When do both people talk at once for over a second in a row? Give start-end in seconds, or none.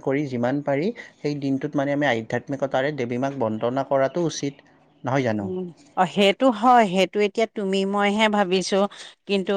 none